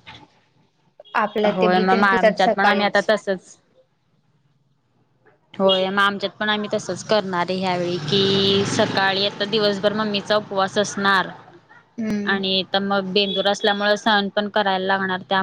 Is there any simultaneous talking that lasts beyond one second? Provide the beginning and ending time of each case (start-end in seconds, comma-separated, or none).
1.6-3.1